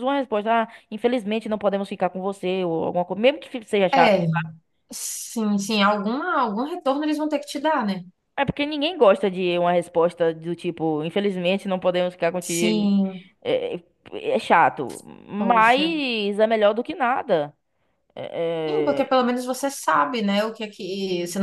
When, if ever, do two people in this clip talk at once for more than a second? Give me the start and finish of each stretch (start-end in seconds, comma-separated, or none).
none